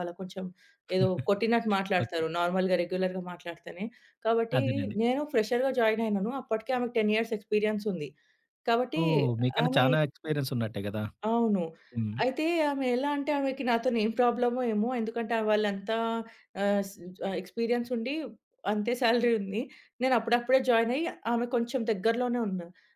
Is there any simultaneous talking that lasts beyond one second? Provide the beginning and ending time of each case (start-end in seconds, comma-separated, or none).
none